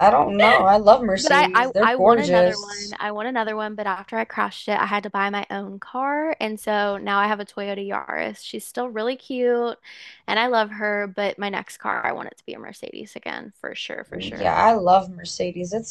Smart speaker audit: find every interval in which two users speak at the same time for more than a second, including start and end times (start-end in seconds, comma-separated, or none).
1.2-3.0